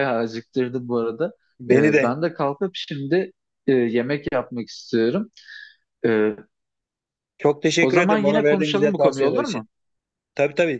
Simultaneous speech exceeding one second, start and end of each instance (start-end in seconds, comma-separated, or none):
7.8-9.7